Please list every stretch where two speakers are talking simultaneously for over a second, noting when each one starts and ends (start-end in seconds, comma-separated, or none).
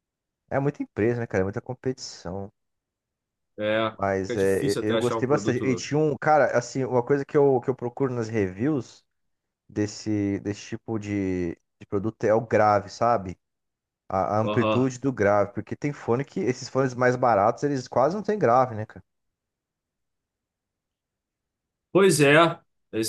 4.0-5.9